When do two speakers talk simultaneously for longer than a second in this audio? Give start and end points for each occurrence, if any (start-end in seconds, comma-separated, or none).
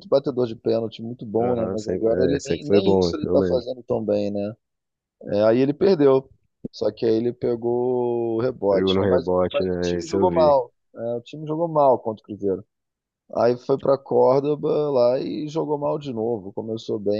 1.4-3.7, 8.7-10.6